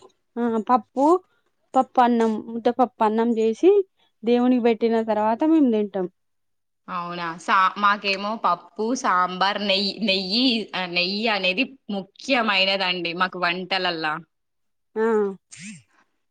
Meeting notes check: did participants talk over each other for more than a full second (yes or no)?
no